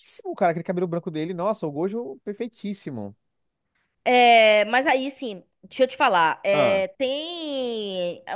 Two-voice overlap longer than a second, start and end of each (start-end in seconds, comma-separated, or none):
none